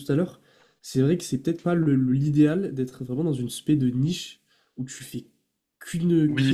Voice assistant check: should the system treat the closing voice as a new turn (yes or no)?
yes